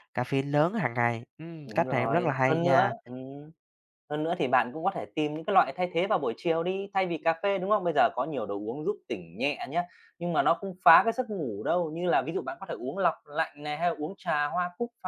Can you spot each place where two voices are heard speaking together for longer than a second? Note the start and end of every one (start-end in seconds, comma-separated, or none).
1.6-2.9